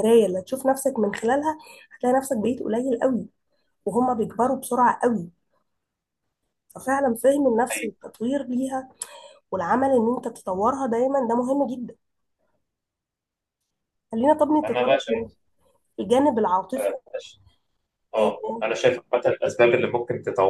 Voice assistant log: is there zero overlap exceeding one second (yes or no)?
yes